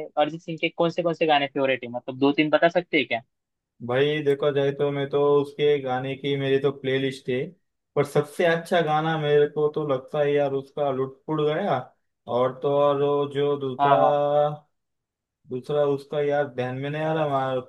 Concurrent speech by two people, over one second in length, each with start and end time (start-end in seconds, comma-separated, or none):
none